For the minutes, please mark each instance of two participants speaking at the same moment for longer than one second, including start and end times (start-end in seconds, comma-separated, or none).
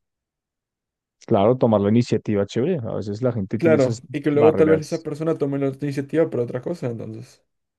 3.6-5.1